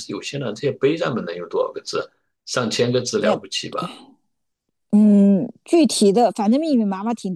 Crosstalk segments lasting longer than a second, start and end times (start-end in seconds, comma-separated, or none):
none